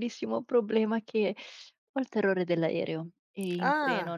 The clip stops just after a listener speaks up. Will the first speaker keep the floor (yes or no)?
yes